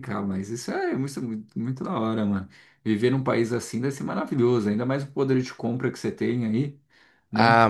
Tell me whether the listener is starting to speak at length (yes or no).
yes